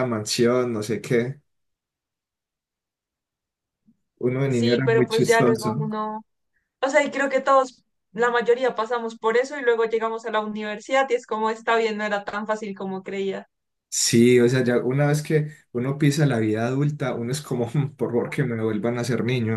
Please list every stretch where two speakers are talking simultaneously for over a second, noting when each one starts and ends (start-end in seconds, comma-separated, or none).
4.5-5.8